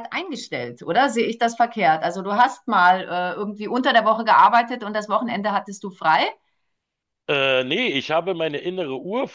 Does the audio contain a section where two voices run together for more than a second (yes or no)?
no